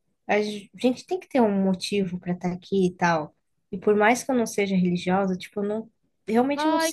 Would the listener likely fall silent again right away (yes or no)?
no